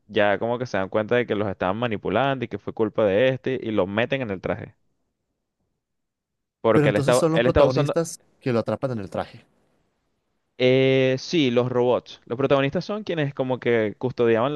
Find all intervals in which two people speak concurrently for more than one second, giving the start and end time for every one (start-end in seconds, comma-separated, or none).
6.7-8.0